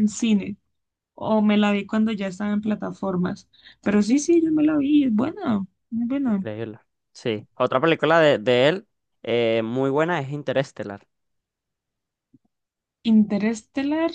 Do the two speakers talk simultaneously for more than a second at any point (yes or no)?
no